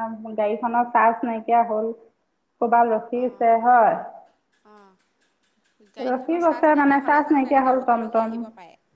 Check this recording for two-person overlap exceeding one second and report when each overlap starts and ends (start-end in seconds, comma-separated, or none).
6.1-8.4